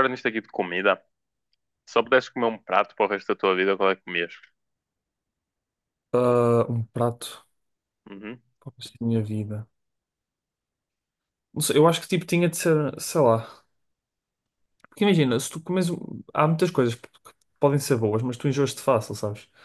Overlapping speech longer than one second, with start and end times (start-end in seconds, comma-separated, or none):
none